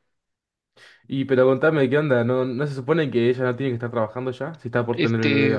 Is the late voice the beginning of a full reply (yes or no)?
yes